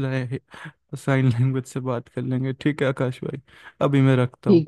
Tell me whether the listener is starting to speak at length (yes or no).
yes